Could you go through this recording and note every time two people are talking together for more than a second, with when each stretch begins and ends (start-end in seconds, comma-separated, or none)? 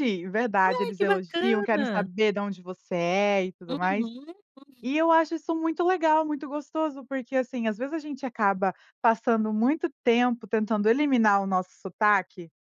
0.7-2.1